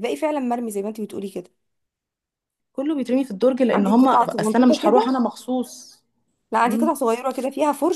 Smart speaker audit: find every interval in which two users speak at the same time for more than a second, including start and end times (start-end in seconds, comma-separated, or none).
3.7-5.2